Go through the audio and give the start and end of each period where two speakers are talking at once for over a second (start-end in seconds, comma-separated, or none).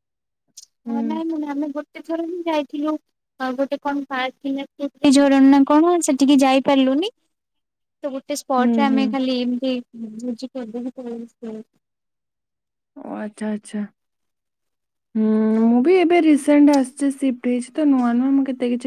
none